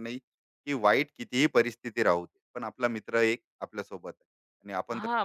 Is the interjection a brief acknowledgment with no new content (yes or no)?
no